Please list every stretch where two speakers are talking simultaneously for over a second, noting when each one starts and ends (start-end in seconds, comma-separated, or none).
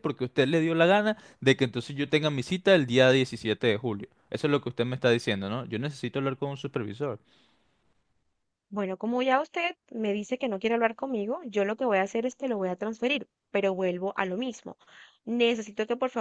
none